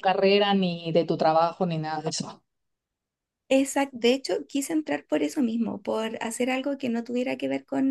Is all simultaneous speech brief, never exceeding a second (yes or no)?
yes